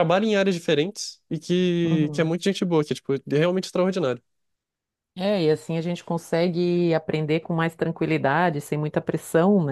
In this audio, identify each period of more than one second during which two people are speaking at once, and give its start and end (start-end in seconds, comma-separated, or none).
none